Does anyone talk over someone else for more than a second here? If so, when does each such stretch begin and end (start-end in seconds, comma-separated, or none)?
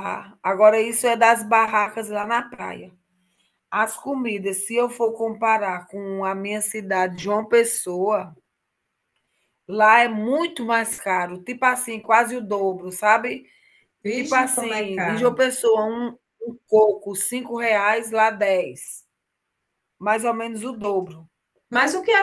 14.1-15.4